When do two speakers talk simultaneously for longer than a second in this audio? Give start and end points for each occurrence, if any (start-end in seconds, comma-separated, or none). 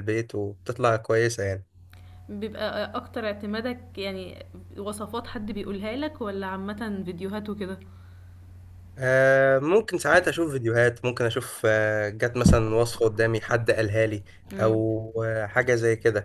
none